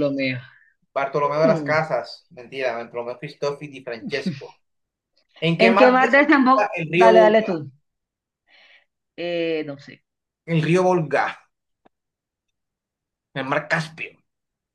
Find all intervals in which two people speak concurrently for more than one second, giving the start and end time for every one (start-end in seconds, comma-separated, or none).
5.6-7.6